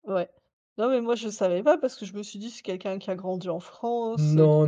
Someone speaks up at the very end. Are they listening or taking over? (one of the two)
taking over